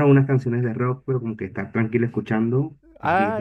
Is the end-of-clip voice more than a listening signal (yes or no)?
yes